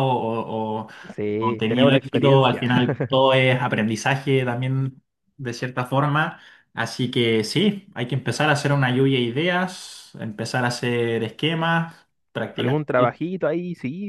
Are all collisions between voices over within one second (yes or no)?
no